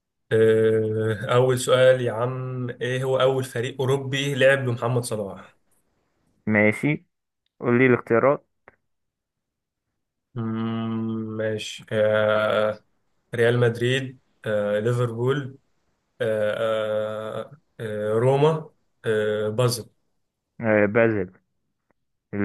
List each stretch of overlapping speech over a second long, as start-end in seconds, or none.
none